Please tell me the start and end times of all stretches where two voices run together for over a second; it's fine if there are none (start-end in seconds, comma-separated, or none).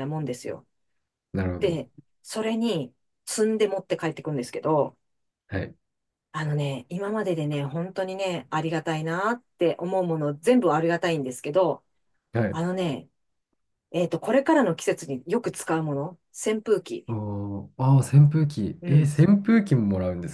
none